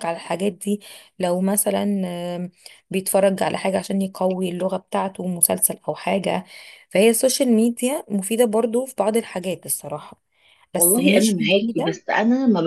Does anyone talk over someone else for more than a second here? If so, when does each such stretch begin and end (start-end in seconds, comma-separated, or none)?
10.8-12.0